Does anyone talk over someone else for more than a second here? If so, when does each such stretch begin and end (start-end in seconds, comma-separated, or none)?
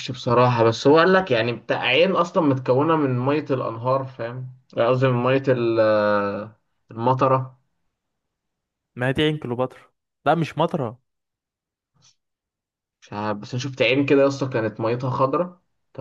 none